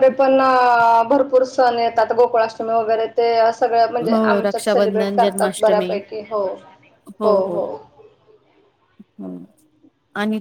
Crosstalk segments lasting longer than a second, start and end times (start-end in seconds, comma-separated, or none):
4.1-5.9